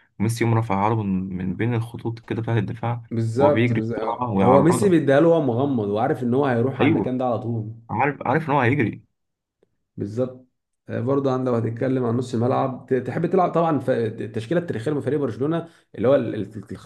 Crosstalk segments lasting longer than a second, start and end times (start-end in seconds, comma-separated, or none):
3.1-5.0